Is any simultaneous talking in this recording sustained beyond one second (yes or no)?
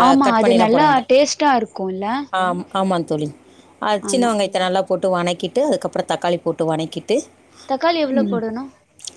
no